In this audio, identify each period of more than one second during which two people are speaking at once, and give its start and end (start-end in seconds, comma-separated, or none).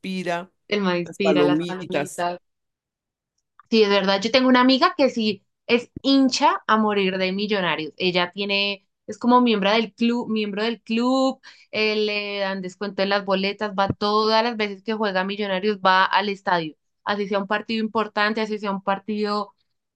1.0-2.3